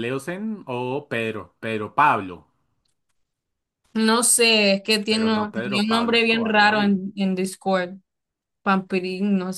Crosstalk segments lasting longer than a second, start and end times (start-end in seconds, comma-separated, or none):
5.1-7.0